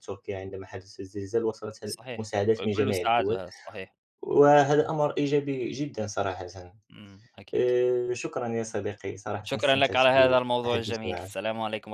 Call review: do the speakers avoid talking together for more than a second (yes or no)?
no